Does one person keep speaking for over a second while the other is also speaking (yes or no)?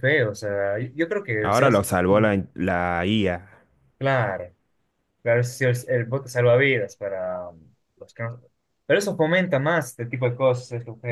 no